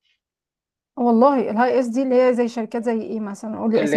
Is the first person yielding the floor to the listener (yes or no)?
yes